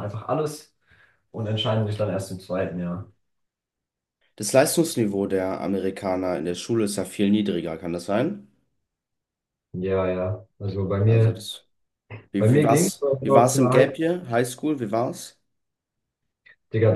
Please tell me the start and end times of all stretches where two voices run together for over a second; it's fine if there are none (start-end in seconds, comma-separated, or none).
12.4-14.0